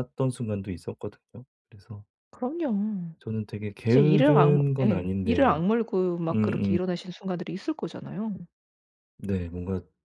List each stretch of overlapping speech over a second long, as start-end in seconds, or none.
3.9-5.6